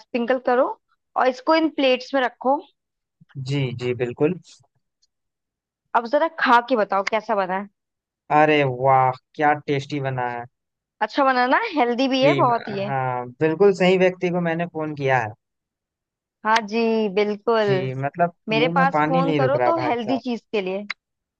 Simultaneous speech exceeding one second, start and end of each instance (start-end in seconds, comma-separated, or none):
18.5-20.2